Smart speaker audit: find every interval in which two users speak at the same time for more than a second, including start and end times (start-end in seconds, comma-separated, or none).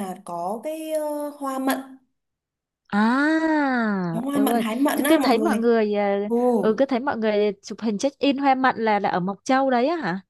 4.1-5.7